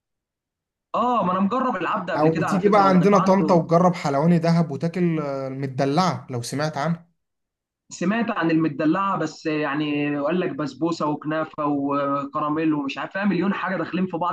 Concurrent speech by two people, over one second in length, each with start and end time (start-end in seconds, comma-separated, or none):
2.1-3.5